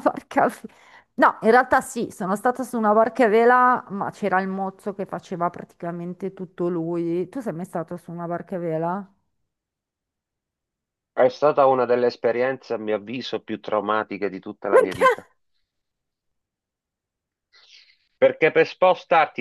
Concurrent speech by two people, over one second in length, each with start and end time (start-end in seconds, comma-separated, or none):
none